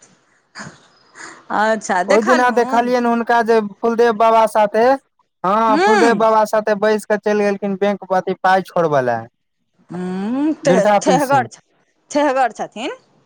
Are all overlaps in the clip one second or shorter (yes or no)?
yes